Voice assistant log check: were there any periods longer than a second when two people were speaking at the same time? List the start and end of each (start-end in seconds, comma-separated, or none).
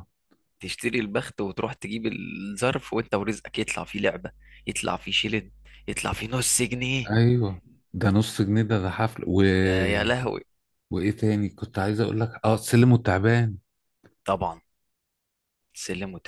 none